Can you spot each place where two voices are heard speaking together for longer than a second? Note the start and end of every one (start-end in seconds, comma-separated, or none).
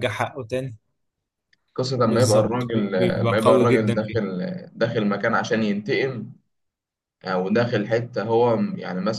2.0-4.2